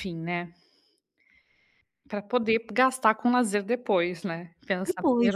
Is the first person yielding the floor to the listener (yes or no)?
yes